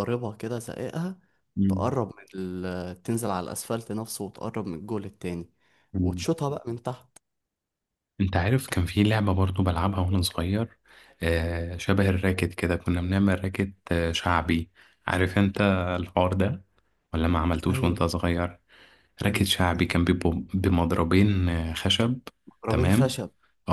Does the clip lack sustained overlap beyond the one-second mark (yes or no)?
yes